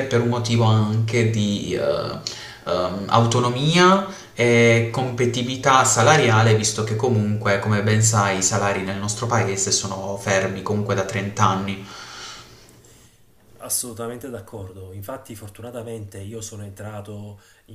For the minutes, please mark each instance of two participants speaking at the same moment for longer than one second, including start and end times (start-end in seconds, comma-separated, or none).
none